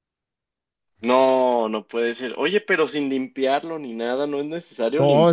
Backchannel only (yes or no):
no